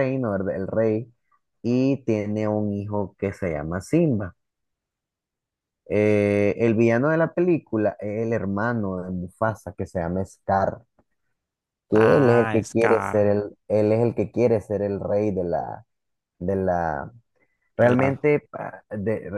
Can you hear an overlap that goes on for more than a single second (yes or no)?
yes